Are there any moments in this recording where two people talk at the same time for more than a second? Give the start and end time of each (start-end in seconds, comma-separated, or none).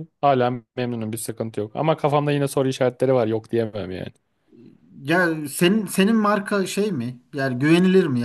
none